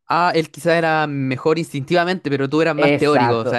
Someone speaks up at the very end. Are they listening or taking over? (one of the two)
taking over